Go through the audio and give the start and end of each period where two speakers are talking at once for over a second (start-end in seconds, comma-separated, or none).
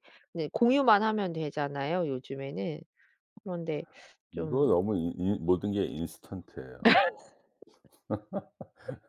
none